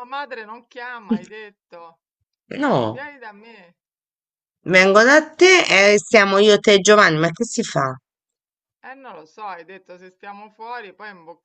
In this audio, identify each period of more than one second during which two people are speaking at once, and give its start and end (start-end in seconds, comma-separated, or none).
none